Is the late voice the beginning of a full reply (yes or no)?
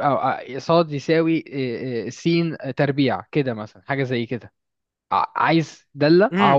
yes